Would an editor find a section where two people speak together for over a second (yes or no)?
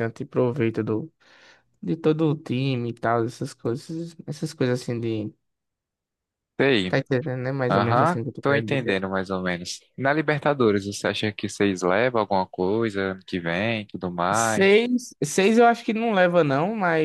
yes